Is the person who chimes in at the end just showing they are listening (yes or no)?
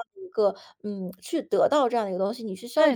no